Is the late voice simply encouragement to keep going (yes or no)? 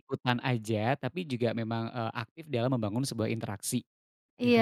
no